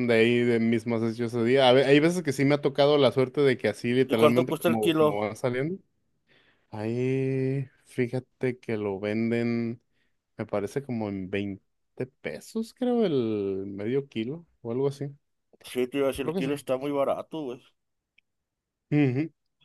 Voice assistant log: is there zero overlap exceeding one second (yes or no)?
no